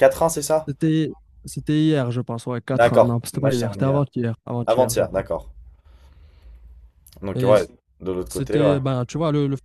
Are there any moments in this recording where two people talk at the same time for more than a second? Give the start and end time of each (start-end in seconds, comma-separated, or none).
2.7-4.0